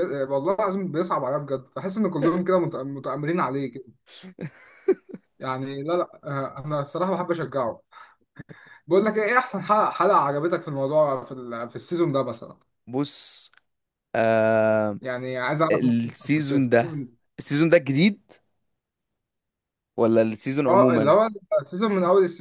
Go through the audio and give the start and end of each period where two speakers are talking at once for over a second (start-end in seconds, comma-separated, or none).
15.7-17.0